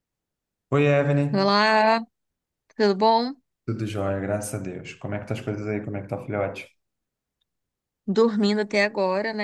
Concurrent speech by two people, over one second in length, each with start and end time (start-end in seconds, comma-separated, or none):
none